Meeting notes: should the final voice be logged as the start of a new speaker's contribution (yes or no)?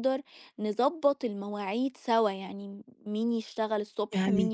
no